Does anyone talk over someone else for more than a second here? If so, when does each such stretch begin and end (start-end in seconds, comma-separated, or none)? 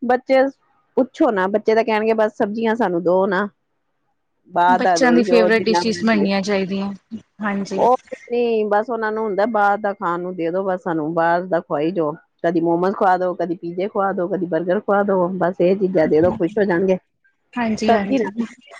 4.8-6.2